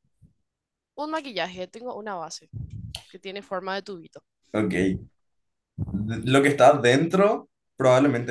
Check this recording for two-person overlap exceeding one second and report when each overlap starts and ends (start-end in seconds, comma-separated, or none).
none